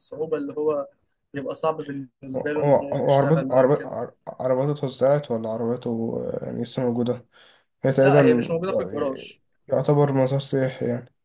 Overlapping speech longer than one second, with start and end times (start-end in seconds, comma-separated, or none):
2.4-4.0